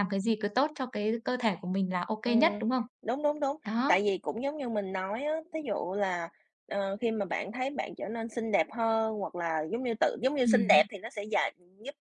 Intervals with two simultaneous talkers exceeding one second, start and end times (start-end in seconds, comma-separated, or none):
none